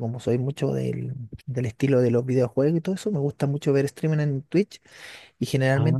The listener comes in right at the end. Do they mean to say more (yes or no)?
no